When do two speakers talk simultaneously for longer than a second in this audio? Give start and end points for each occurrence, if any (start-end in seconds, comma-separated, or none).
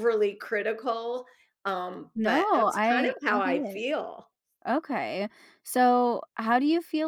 2.1-3.8